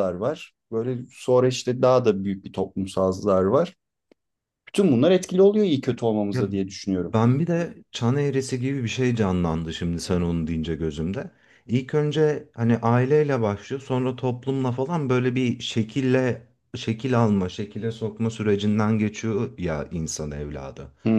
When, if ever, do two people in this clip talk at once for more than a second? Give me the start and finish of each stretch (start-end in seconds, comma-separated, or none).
none